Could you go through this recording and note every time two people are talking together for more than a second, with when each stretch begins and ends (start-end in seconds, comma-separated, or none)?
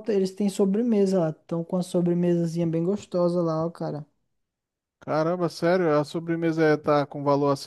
none